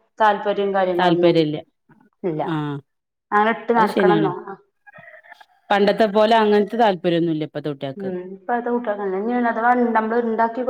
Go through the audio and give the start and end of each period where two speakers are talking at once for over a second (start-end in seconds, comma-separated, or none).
none